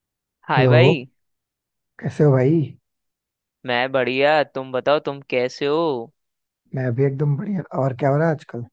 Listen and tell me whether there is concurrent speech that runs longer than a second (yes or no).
no